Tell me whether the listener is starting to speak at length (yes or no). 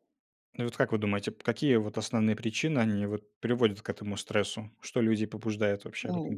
yes